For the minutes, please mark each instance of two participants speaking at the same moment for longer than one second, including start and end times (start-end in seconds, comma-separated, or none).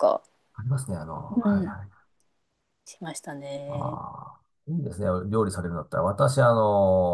none